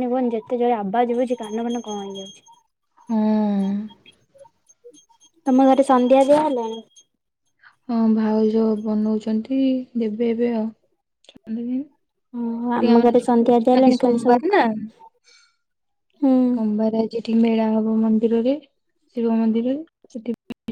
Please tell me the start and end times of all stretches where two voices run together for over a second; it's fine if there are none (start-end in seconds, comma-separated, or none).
12.4-14.4